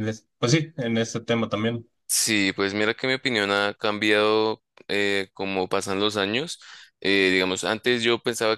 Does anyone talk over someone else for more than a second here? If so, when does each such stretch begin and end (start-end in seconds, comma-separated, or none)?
none